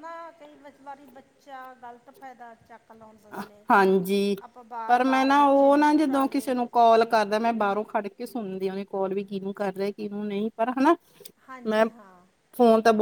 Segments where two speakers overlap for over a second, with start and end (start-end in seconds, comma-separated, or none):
4.9-6.5